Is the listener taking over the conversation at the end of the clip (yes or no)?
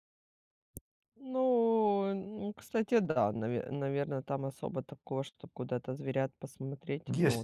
yes